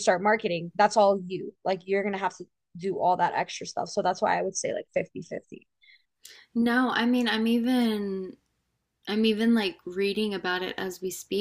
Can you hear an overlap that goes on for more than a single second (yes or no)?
no